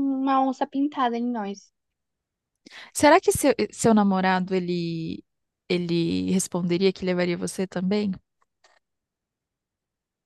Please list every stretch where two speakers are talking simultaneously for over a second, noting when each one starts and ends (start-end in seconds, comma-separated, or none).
none